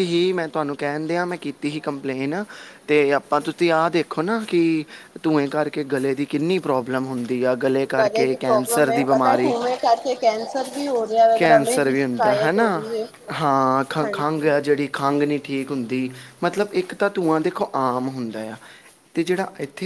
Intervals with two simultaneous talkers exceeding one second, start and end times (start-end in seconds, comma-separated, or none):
8.0-9.5, 11.3-12.7